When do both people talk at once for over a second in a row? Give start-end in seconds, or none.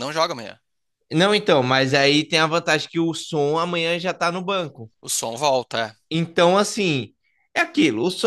none